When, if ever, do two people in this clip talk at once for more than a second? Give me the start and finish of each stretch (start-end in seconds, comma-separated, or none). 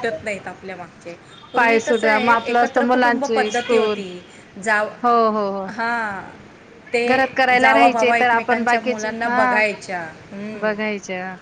1.6-4.0, 7.6-9.6